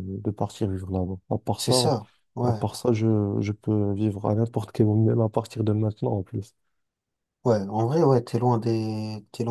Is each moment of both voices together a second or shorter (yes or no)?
yes